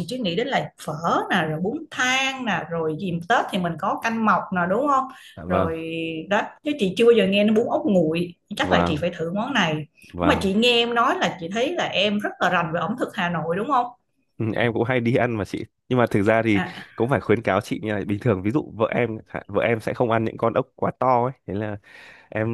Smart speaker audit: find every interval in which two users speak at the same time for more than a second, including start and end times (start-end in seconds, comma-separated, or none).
none